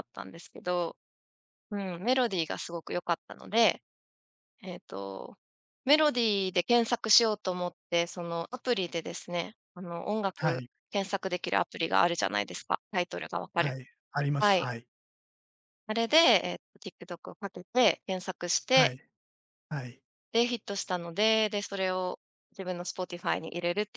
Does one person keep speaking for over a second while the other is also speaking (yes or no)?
no